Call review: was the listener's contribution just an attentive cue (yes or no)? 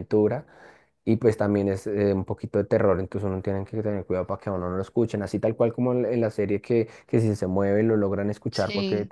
yes